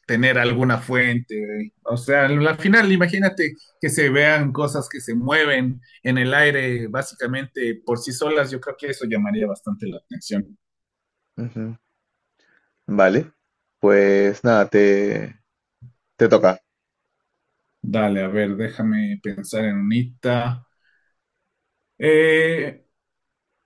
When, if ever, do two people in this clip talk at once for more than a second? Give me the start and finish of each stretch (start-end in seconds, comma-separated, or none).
none